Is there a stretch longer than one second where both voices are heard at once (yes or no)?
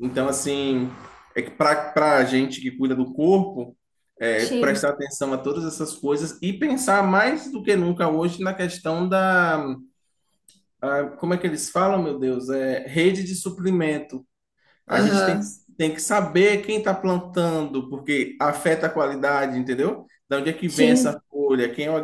no